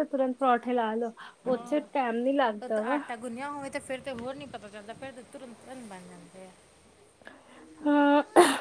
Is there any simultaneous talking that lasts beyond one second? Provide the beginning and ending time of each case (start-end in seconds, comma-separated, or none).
none